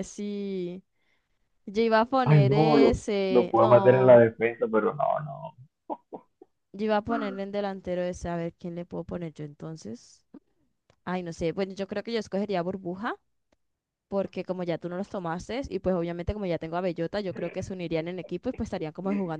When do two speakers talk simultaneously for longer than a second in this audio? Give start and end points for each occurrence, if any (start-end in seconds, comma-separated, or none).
2.2-4.2